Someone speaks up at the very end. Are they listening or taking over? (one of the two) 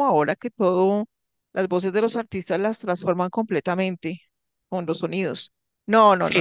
taking over